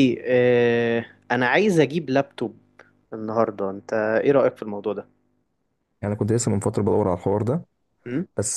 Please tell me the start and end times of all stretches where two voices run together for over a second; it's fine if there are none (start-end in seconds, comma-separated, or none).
none